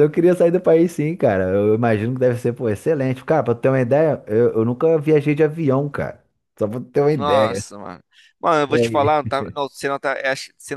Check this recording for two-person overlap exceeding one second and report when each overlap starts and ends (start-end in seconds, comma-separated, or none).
none